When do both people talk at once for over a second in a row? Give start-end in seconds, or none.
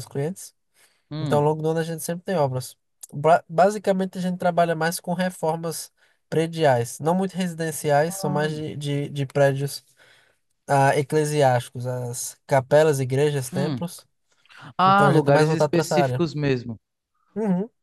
14.8-16.2